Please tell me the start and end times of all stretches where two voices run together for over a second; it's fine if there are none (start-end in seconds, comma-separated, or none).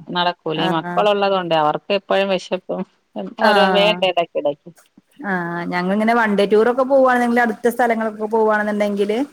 none